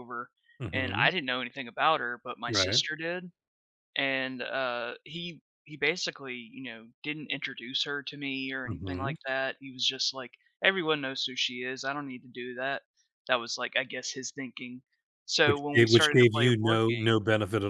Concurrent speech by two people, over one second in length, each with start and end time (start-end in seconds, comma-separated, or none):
15.4-17.2